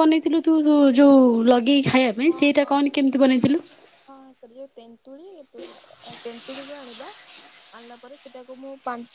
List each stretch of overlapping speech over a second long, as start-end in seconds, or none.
none